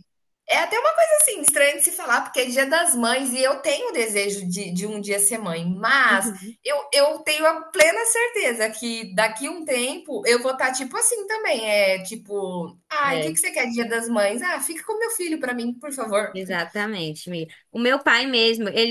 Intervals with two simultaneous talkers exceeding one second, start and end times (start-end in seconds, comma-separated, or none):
none